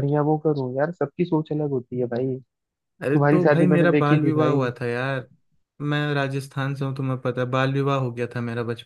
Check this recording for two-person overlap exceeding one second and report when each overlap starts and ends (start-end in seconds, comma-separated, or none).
3.1-4.6